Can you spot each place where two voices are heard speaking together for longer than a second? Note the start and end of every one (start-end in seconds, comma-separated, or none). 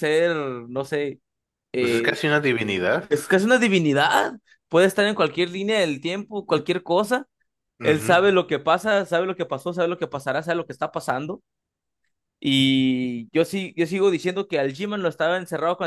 none